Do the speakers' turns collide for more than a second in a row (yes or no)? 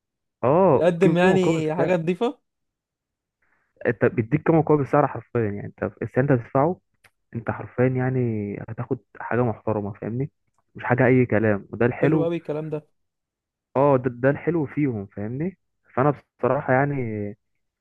yes